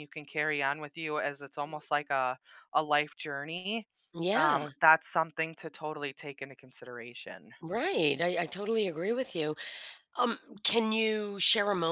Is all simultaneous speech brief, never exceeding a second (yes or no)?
yes